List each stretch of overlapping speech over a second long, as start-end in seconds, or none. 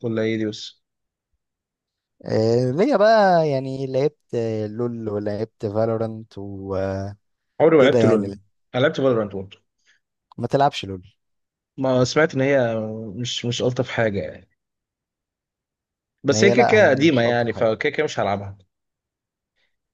16.3-17.8